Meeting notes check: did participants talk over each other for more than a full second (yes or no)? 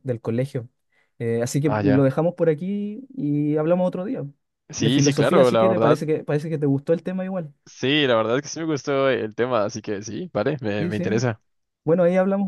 yes